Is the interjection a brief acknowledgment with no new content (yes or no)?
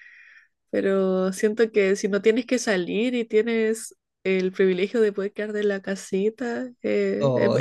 no